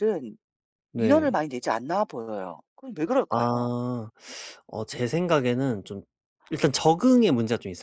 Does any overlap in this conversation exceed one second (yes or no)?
no